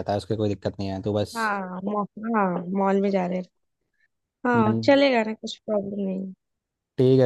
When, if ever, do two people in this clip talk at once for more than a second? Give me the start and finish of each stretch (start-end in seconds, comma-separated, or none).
none